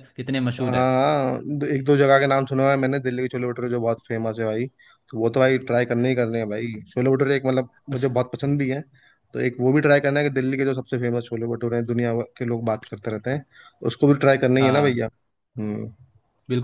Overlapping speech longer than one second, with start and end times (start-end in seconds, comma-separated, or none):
none